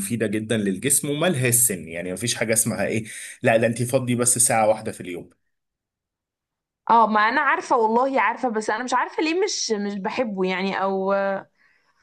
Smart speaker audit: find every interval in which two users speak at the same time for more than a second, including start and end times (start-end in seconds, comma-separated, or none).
none